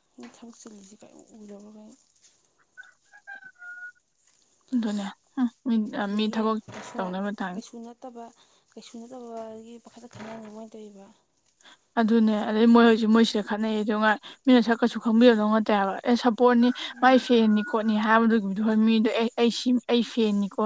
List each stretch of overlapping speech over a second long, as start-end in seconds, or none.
none